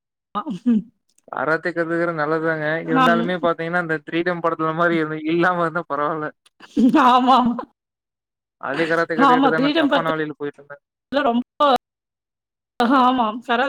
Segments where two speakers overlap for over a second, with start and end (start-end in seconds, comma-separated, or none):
9.3-10.8